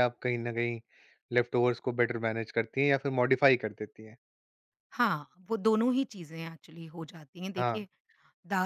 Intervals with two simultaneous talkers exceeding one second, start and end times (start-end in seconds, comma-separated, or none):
none